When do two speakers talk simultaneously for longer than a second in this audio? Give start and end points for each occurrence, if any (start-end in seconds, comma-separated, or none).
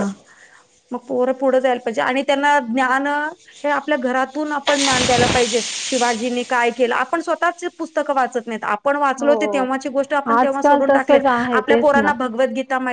10.4-12.1